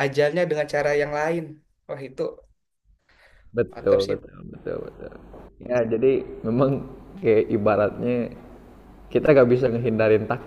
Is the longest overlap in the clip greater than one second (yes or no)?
no